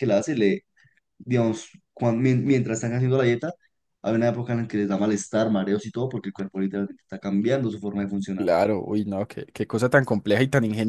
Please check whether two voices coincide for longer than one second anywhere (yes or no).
no